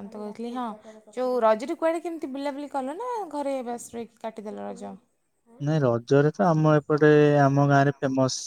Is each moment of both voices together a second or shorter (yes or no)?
yes